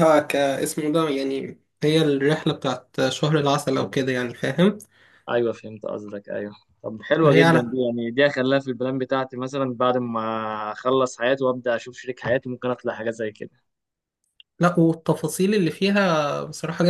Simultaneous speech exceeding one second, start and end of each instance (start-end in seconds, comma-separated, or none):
none